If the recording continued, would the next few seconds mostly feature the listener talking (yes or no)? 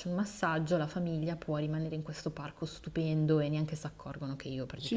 yes